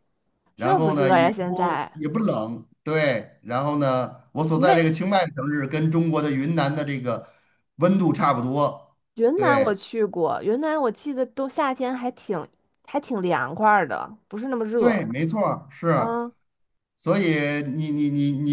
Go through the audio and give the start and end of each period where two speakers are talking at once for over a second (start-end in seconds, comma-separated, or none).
0.6-1.9